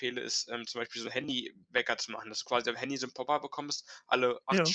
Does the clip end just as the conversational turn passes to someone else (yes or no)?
no